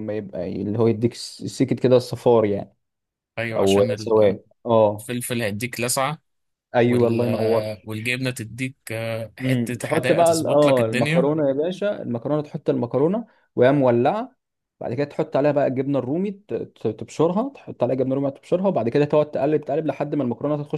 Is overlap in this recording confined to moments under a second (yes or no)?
no